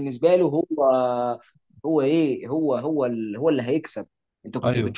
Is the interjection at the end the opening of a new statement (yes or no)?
no